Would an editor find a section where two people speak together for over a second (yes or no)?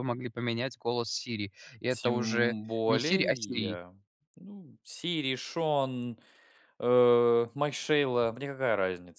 yes